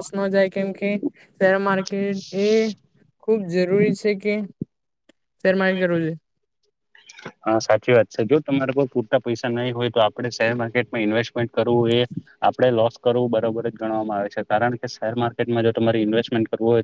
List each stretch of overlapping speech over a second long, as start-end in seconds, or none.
none